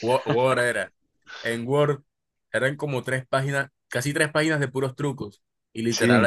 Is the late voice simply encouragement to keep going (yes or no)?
yes